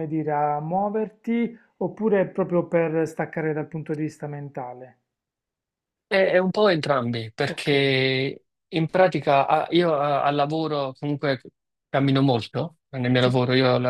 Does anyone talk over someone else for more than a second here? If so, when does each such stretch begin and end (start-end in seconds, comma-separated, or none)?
none